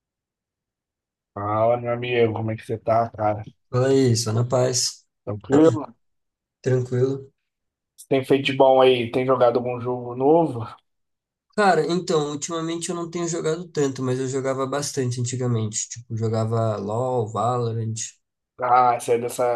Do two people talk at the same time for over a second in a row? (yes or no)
no